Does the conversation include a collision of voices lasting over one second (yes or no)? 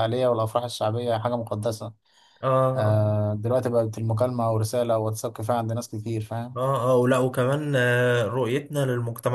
no